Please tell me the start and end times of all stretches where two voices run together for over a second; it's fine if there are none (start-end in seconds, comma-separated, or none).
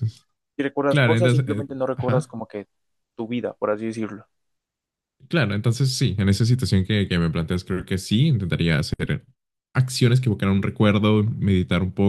0.9-2.4